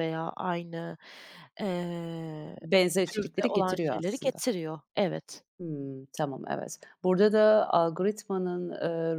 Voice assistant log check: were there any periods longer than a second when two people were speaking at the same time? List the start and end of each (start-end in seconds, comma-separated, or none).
3.1-4.4